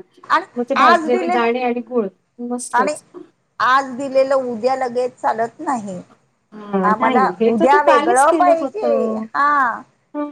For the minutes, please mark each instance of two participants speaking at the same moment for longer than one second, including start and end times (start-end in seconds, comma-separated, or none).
6.9-9.2